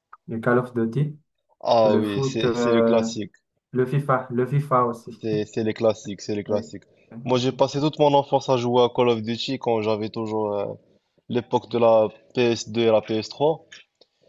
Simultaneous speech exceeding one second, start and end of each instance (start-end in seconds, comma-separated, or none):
1.8-3.1